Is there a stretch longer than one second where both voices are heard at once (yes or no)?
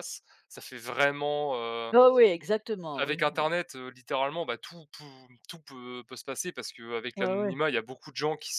no